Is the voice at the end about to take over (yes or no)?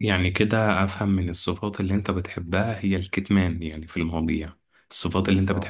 no